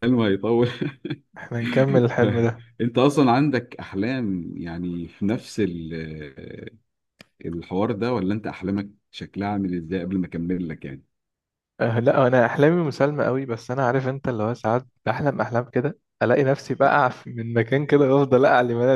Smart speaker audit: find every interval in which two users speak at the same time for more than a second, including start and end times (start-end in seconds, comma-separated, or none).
none